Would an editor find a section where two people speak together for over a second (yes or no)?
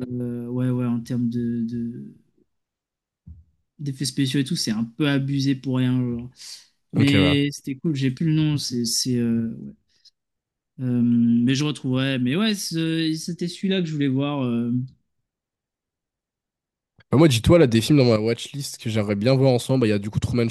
no